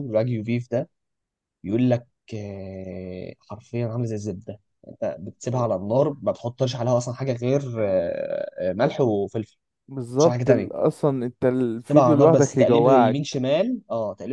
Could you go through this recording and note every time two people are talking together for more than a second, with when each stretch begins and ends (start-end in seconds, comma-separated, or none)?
11.9-13.4